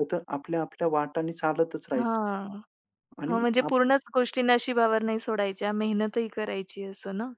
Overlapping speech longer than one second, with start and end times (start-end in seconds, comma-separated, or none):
none